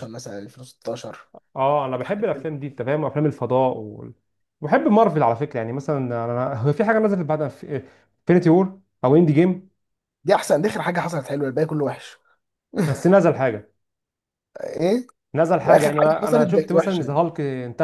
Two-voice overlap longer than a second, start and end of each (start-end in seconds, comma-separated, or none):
15.7-17.2